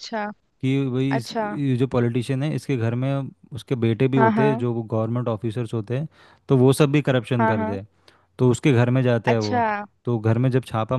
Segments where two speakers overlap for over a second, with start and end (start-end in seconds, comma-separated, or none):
none